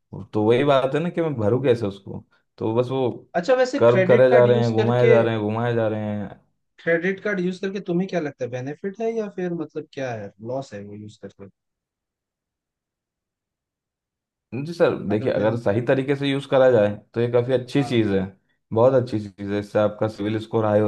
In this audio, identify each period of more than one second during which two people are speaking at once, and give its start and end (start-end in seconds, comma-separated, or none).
3.8-5.2